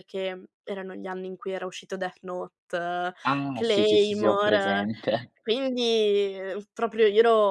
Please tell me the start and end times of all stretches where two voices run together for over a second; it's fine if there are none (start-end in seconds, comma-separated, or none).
3.5-4.8